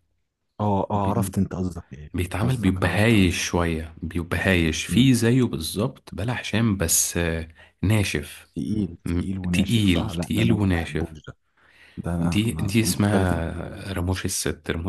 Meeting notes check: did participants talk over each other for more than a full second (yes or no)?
yes